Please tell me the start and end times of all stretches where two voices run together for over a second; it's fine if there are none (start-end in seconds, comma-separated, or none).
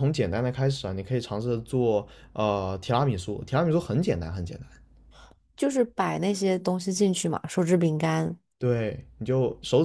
none